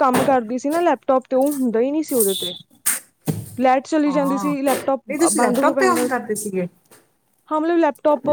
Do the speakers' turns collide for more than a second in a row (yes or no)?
yes